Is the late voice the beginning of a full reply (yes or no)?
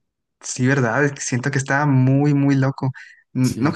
no